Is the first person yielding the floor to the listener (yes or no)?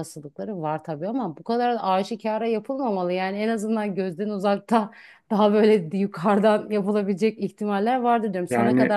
no